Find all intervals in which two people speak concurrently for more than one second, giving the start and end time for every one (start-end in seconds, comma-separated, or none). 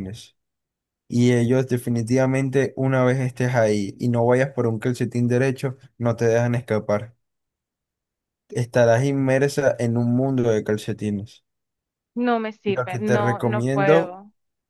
12.7-14.2